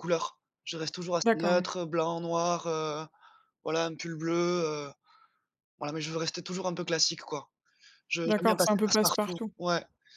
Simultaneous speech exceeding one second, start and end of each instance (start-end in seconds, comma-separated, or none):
8.3-9.5